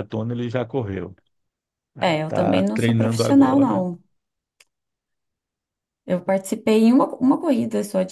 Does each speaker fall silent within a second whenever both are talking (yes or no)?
no